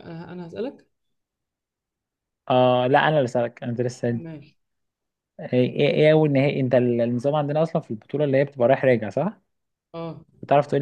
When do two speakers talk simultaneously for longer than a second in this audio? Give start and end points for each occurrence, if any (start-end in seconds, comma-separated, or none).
none